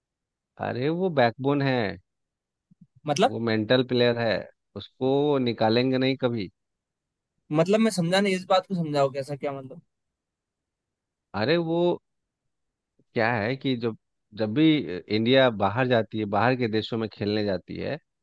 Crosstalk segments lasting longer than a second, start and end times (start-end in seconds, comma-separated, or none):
none